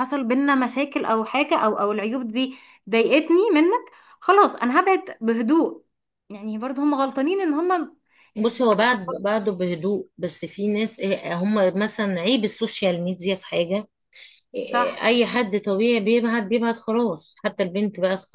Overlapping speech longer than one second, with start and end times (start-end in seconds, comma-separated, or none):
none